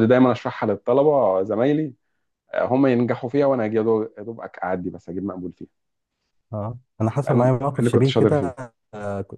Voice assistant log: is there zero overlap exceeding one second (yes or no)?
no